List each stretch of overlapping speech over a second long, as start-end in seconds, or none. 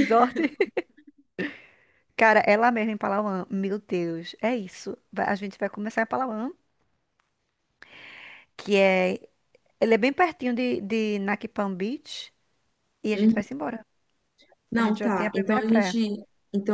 14.8-16.0